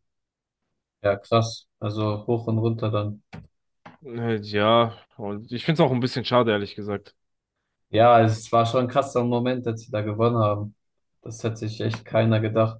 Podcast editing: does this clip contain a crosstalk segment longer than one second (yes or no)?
no